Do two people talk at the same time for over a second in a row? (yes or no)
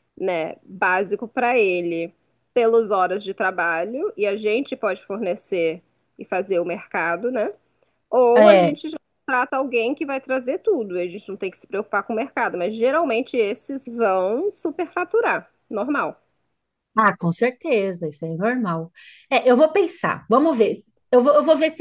no